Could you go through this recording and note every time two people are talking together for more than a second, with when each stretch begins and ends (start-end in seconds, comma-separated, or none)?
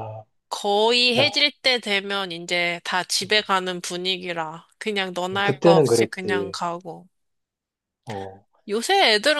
5.3-6.6